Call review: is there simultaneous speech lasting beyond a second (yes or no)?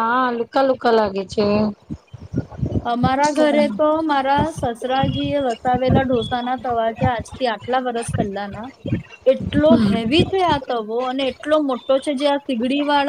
no